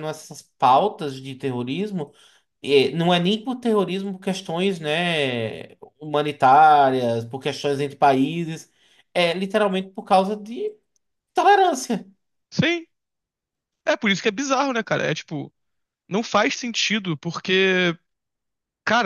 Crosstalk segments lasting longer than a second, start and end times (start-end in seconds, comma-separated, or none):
none